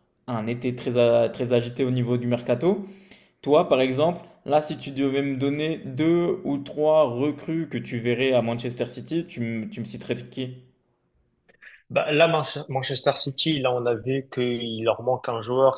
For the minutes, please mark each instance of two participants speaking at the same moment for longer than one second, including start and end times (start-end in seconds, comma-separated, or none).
none